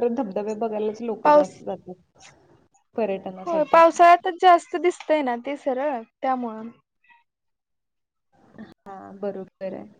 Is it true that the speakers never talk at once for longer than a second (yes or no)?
yes